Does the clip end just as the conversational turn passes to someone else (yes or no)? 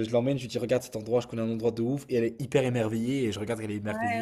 yes